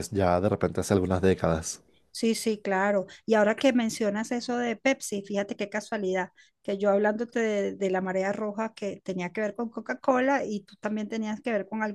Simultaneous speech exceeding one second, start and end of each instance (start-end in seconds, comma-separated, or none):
none